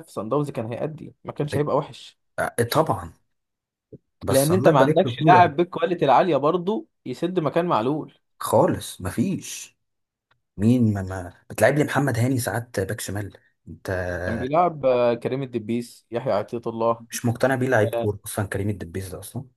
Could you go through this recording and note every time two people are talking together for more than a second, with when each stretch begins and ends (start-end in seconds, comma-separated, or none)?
4.3-5.5